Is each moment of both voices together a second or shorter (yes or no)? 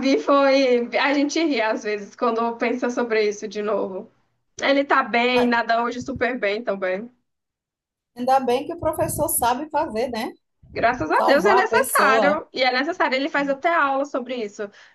no